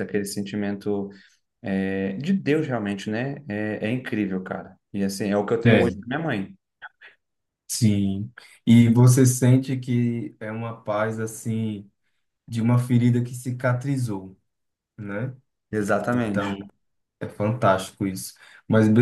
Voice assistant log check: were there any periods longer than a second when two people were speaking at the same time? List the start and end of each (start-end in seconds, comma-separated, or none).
none